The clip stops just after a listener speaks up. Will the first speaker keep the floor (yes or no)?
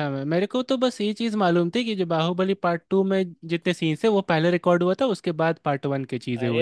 no